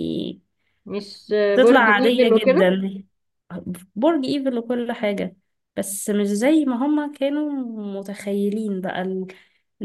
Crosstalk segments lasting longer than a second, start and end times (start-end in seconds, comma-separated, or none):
1.5-2.7